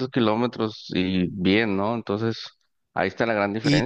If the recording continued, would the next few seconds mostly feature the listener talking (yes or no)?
yes